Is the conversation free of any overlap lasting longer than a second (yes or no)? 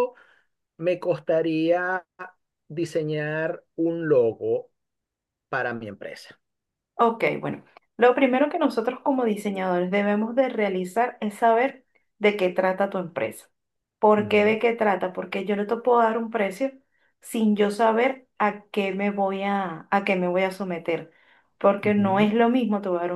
yes